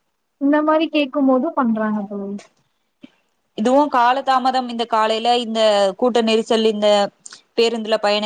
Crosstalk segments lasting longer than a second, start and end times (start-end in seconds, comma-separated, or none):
none